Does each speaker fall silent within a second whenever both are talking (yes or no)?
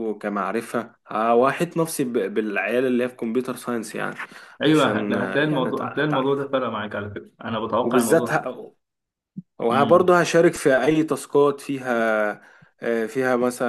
no